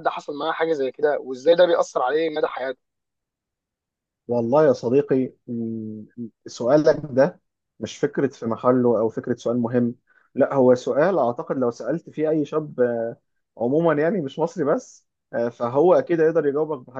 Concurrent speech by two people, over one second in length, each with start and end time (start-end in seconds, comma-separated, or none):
none